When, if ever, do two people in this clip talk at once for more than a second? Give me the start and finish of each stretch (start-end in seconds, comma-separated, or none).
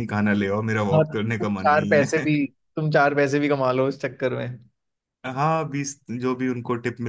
0.9-2.3